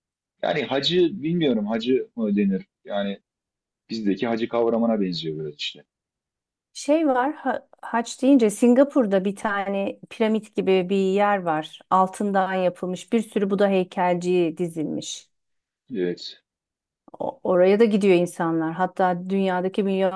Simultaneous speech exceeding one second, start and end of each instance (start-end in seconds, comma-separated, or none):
none